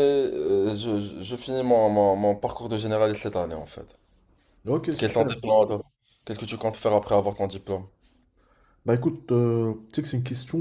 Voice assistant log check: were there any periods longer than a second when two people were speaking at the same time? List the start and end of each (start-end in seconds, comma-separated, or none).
none